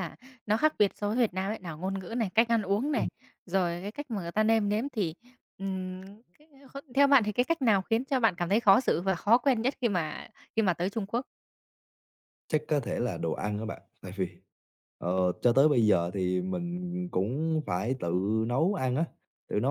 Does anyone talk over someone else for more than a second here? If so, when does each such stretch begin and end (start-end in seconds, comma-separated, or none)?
none